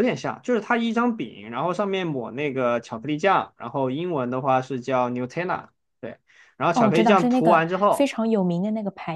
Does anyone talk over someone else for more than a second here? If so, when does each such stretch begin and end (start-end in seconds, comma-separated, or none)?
6.7-8.1